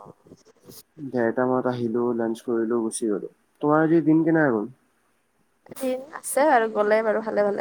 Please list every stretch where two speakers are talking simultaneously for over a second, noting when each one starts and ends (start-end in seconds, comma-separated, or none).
none